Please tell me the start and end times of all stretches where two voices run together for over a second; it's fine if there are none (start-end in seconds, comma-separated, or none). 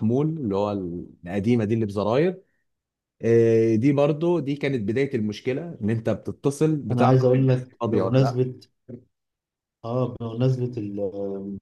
6.9-8.4